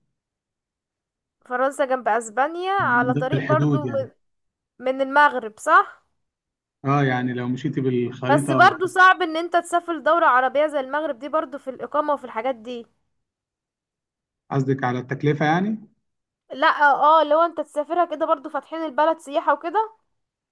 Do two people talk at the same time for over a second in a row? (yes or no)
yes